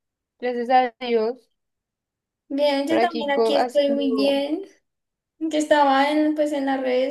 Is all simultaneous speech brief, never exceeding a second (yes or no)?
no